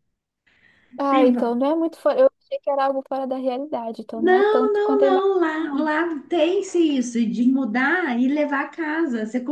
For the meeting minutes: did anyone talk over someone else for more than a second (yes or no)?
yes